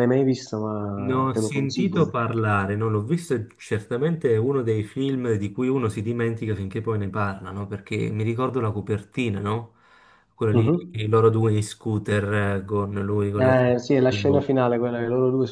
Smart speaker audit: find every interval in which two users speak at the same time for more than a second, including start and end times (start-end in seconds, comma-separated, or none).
1.0-2.4